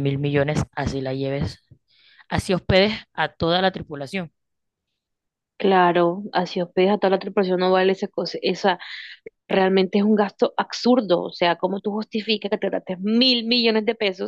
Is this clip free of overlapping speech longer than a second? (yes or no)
yes